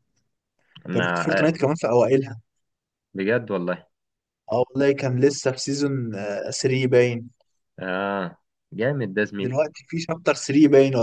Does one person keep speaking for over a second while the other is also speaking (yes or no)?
no